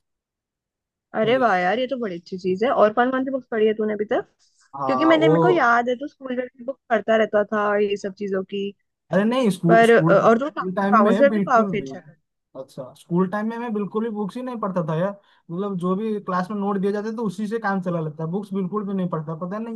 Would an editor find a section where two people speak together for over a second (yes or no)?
yes